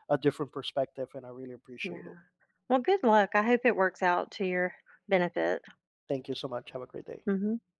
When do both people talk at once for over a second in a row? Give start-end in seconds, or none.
none